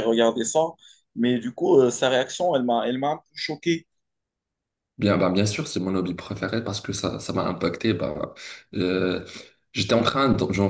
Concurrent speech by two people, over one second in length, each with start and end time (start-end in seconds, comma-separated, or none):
none